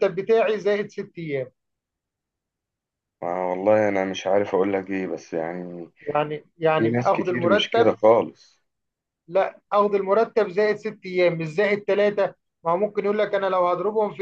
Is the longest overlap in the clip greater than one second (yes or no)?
yes